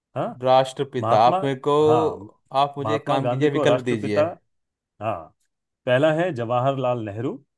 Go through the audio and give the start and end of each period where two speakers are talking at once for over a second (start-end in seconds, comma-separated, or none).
2.8-4.2